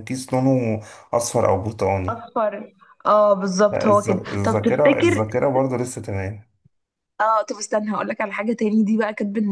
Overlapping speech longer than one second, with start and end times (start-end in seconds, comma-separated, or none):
3.7-5.2